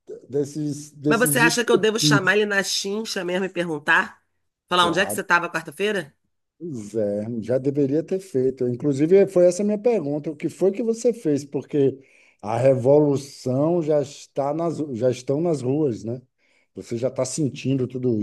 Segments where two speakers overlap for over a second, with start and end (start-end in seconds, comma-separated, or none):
1.1-2.3